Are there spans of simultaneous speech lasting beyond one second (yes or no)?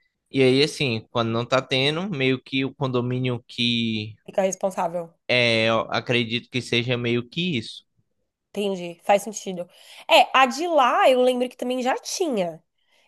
no